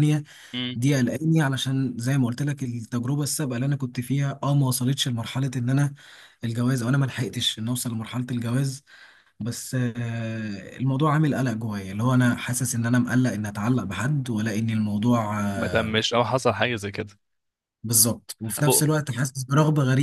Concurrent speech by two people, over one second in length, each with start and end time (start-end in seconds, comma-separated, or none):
none